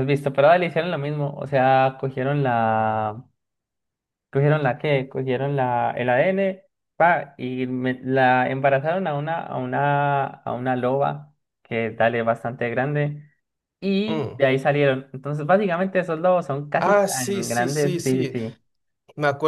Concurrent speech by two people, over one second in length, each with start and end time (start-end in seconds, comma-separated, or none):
16.8-18.4